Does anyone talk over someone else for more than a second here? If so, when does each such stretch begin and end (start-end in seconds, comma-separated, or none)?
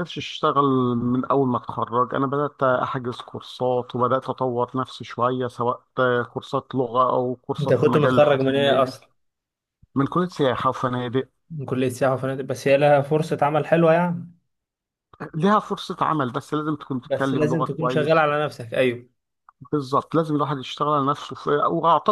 7.6-8.9, 17.1-18.2